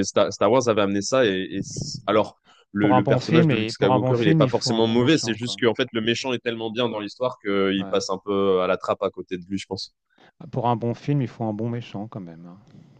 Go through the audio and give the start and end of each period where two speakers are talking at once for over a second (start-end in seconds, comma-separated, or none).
2.8-5.6